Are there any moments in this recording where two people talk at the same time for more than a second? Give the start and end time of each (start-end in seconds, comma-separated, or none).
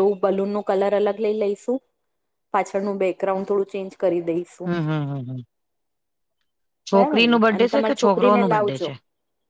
7.0-8.9